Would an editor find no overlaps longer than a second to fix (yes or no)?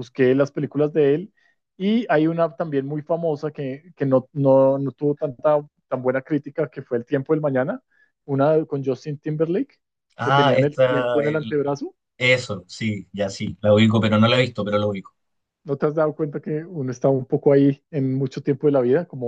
no